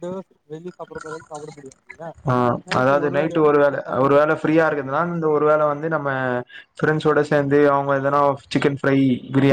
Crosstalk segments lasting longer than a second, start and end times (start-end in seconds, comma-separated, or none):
2.8-5.0